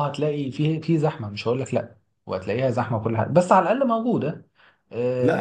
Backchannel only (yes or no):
no